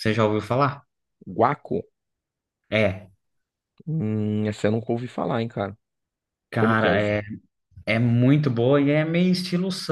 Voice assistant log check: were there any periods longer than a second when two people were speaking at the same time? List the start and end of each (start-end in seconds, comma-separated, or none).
none